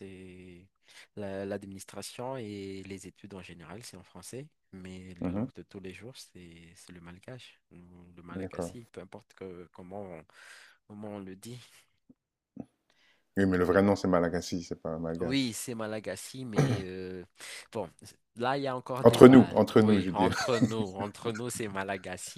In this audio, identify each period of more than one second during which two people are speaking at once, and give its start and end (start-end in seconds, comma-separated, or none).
19.0-20.4